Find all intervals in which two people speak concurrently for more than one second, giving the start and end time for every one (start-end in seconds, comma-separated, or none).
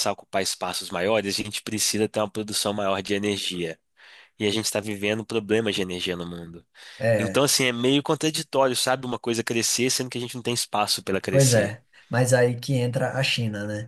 none